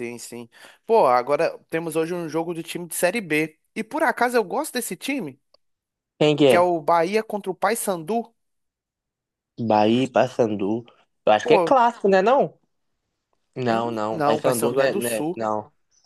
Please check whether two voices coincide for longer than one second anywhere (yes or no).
yes